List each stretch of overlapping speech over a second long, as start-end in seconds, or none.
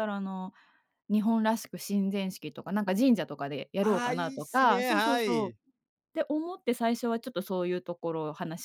3.8-5.5